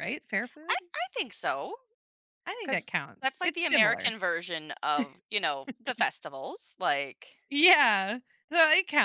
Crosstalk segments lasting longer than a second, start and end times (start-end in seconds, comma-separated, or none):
2.6-4.1